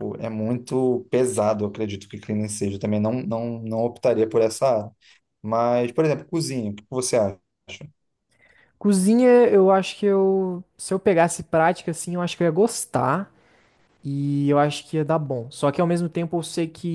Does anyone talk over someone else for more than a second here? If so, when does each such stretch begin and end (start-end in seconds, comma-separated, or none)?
none